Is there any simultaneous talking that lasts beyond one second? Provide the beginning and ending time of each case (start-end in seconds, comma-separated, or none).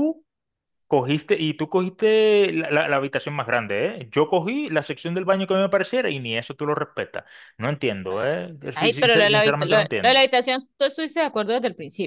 8.7-10.3